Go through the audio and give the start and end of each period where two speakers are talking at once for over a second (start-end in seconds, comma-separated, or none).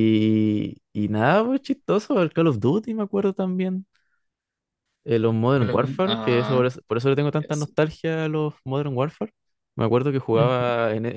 5.2-6.7